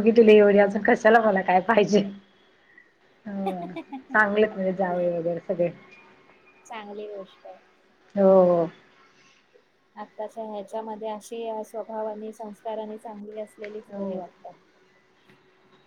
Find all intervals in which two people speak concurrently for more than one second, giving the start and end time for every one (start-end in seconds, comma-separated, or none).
none